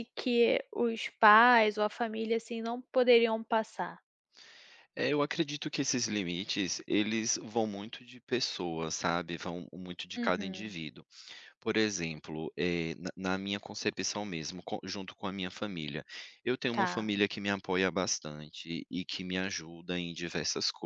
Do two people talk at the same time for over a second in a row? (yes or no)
no